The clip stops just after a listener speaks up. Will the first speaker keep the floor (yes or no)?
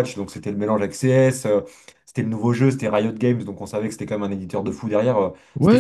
no